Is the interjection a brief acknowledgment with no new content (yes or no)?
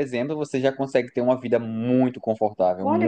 no